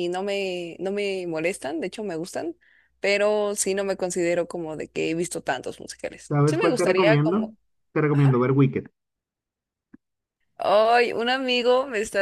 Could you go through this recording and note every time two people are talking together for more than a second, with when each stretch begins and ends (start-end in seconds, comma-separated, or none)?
6.3-7.5